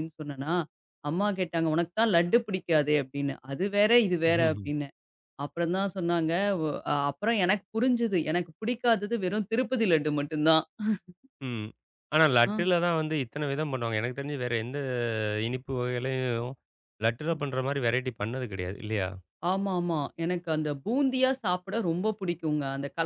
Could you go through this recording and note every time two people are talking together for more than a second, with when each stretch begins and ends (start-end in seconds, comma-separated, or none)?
none